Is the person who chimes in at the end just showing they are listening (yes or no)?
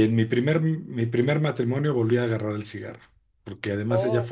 yes